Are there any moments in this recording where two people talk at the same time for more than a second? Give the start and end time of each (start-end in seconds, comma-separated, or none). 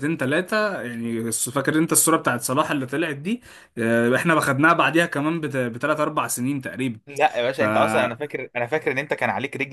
none